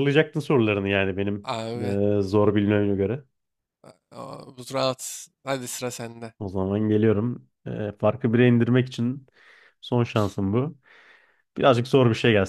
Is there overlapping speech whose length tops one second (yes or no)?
no